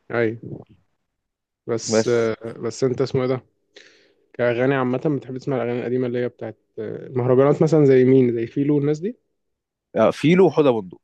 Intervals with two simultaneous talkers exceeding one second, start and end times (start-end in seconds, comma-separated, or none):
none